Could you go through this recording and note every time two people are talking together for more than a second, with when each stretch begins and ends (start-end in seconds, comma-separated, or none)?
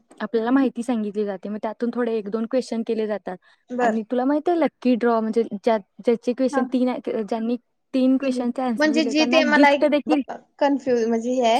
8.2-10.2